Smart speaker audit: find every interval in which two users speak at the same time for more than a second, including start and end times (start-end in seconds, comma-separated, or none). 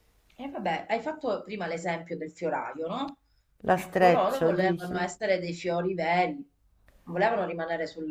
3.7-5.2